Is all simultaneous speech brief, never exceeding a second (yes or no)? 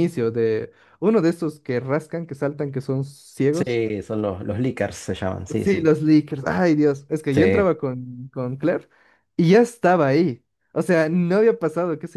yes